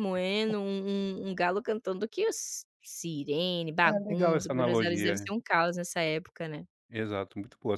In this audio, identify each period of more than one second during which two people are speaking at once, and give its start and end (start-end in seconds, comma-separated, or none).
3.8-5.3